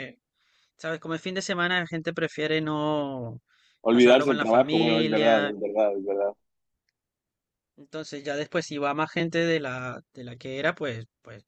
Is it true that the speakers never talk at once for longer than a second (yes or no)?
no